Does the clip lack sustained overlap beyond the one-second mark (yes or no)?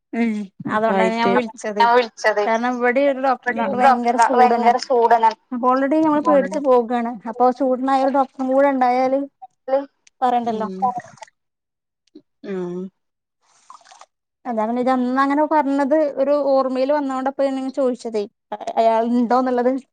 no